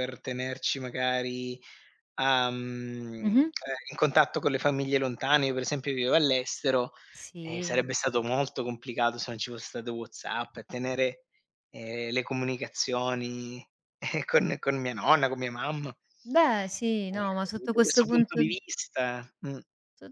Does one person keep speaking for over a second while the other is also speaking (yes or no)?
yes